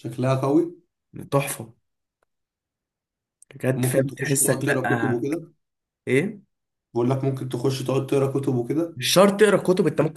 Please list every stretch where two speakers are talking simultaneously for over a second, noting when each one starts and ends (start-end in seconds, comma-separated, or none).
3.7-5.2